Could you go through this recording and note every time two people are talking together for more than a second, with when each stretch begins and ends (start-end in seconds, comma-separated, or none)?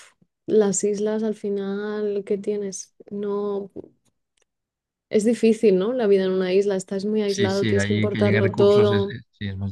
7.2-9.2